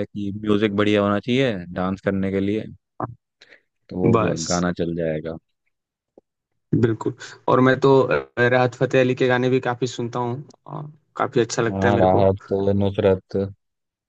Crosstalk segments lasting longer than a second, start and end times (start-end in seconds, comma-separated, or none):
none